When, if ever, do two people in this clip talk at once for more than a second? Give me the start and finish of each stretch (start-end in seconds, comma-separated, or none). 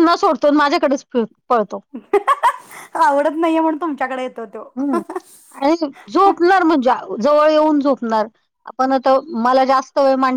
none